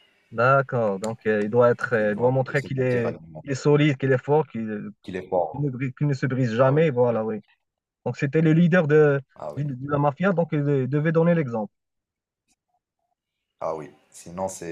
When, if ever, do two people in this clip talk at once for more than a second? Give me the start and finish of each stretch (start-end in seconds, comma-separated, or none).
2.0-3.4